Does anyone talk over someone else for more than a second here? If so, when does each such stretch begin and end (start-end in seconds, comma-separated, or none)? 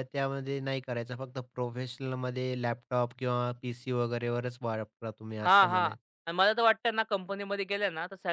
none